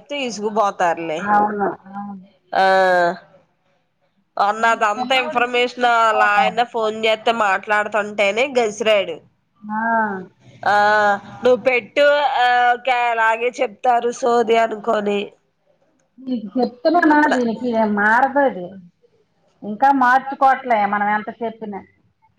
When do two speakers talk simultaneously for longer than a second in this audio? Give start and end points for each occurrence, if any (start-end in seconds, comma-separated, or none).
4.7-6.6